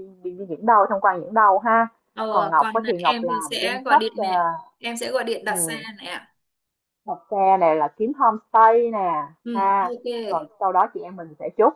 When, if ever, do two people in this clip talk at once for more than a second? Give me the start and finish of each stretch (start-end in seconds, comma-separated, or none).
2.3-4.2